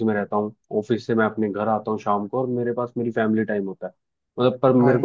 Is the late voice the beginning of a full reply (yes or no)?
no